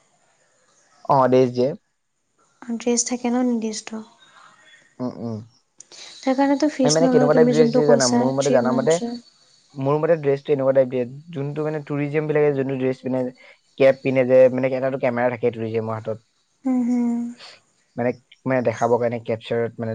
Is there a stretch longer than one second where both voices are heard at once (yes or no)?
yes